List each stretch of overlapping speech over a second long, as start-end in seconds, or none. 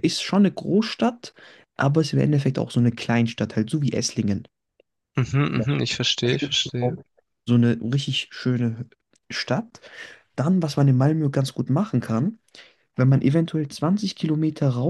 none